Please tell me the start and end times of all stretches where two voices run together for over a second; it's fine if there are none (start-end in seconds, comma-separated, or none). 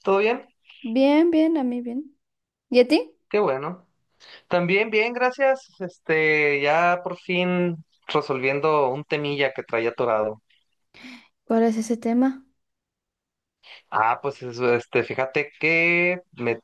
none